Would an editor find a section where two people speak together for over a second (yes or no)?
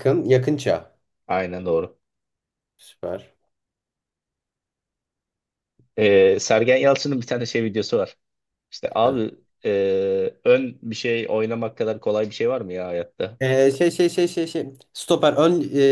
no